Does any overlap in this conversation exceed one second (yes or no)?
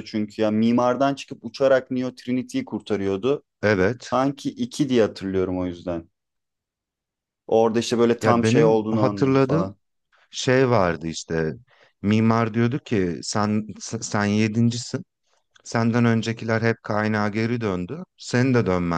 yes